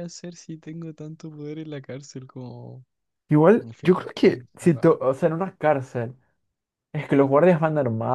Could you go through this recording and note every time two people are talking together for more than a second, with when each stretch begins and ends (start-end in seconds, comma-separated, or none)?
3.6-5.0